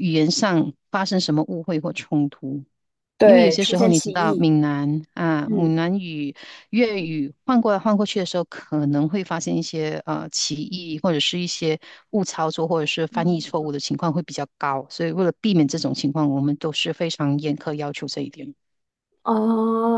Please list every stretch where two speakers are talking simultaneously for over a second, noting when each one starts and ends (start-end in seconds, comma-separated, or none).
3.2-4.5